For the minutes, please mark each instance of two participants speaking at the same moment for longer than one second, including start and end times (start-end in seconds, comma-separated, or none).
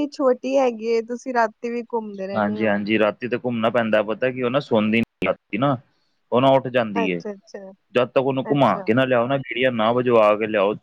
none